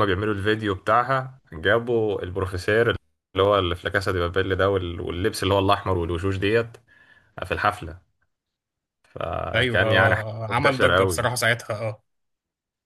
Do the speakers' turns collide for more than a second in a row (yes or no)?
yes